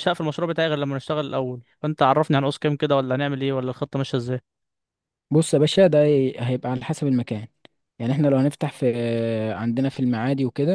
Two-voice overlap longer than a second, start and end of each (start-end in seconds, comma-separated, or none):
none